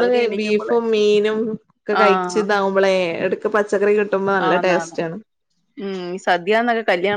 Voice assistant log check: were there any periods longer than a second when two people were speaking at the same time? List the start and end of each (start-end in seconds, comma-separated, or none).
none